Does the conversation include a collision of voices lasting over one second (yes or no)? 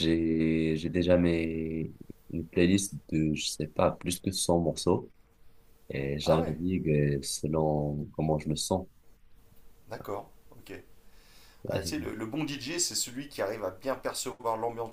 no